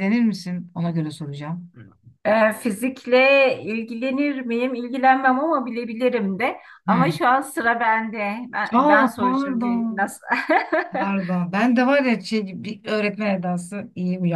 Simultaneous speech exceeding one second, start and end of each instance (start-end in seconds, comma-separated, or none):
8.7-10.1